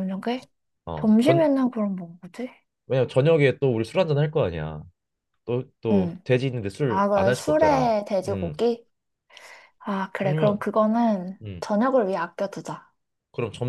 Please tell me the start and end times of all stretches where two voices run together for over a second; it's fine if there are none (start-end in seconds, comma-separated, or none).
6.9-8.6